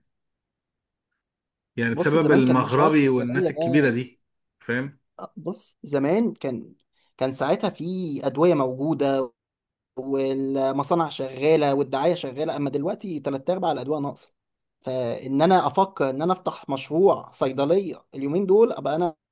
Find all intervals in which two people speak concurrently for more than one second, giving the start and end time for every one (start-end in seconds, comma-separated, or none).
1.9-4.0